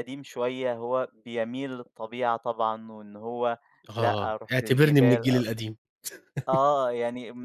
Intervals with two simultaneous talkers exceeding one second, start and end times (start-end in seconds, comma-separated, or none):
4.0-5.3